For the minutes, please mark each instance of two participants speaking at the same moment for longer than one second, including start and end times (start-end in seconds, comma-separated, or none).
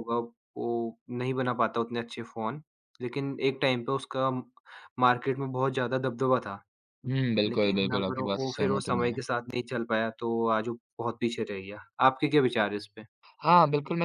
7.5-9.1